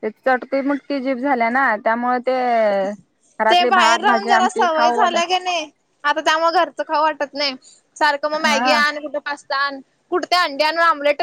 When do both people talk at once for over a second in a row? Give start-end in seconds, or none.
3.5-5.3